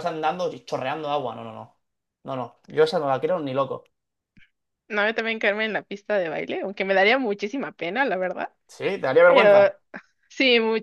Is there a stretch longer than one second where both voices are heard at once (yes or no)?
no